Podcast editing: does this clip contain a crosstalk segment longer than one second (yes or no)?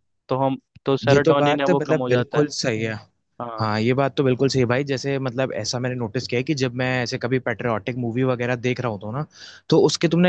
yes